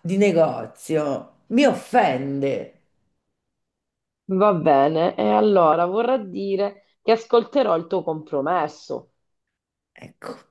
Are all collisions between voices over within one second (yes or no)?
yes